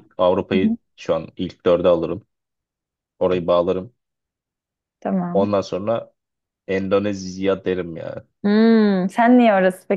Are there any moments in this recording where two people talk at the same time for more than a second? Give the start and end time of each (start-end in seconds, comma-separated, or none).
none